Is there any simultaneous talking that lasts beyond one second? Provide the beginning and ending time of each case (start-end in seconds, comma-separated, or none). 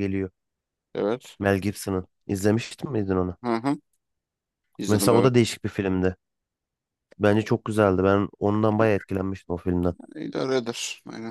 none